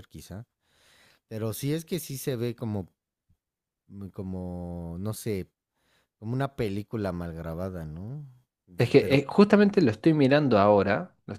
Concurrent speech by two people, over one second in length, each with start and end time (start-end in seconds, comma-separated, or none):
none